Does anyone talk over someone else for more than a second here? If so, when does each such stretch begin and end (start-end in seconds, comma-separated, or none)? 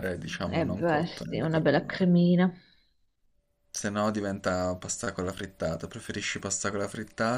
0.5-2.1